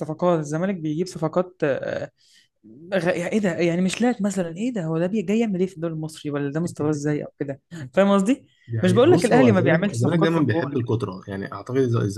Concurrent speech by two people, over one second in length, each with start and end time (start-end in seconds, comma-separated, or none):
8.8-10.8